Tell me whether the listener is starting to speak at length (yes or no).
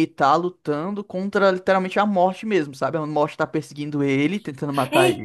yes